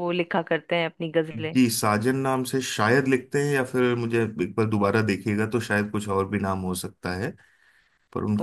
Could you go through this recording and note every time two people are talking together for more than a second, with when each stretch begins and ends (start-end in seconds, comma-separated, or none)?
none